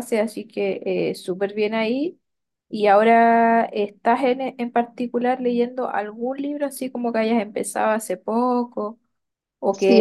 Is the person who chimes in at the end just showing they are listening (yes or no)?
no